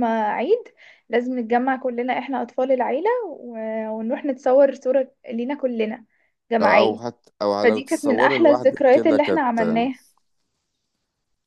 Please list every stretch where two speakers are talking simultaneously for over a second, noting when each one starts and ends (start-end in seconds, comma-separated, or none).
7.6-9.6